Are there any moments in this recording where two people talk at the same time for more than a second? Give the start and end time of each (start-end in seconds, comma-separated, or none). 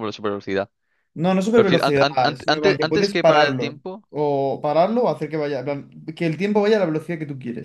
1.5-4.0